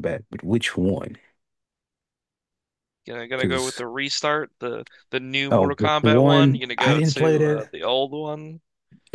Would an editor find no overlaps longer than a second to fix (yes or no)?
no